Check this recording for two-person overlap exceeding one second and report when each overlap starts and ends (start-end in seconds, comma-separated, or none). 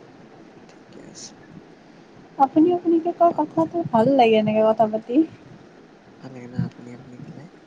none